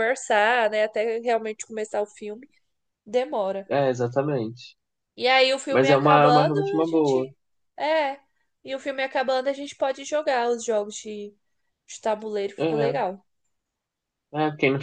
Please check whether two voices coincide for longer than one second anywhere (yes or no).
yes